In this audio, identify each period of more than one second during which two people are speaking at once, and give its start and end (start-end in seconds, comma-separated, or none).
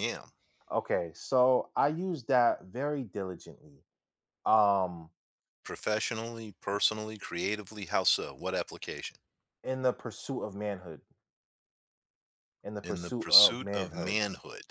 12.8-14.2